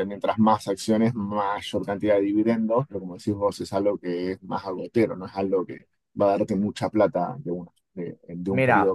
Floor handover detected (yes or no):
yes